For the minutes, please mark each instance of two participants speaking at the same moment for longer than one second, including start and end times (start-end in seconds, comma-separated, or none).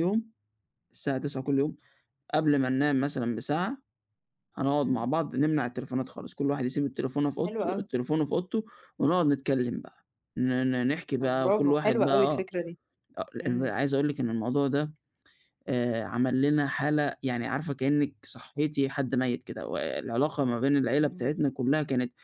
11.2-12.5